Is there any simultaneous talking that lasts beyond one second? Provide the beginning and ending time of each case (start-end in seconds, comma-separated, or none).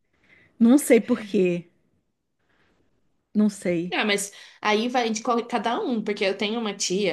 none